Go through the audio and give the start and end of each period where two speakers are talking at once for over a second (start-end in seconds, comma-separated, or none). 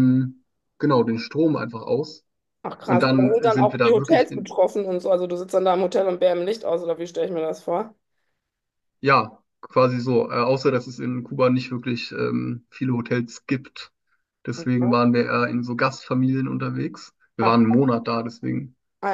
2.9-4.5